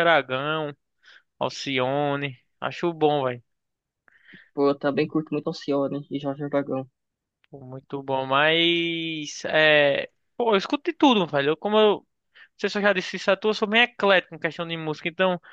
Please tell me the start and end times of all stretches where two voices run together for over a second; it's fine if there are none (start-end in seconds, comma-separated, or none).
none